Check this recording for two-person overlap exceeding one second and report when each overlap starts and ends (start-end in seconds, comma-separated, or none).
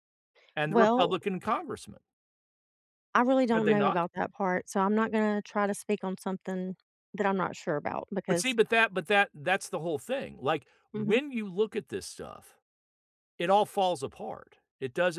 none